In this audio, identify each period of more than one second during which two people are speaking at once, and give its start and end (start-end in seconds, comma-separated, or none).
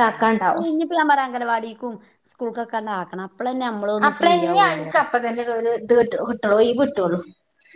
none